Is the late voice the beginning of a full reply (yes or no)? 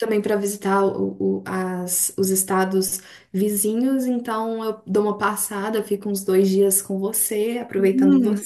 yes